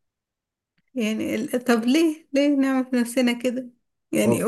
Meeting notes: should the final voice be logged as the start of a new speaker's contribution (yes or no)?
no